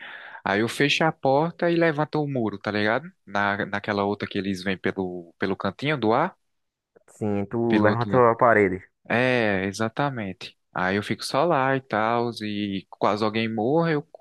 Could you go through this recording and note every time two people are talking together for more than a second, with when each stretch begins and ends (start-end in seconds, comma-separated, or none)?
none